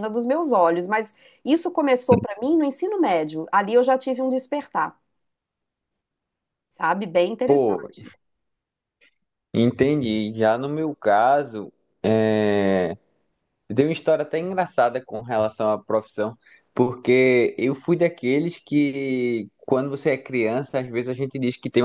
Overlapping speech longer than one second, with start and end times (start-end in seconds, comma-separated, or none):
none